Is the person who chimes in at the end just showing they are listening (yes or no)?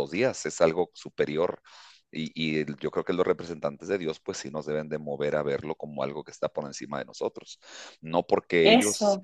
yes